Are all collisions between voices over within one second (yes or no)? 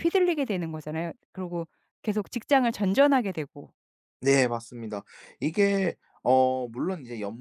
yes